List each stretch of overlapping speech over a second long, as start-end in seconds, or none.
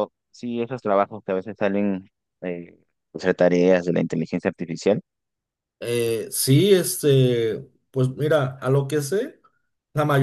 none